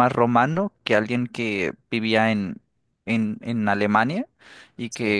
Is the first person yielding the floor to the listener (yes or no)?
no